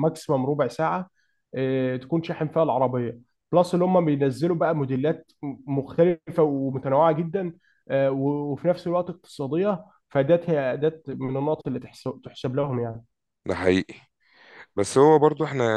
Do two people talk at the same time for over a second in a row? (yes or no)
no